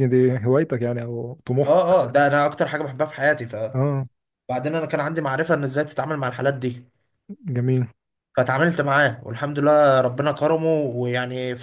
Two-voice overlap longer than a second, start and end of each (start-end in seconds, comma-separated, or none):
none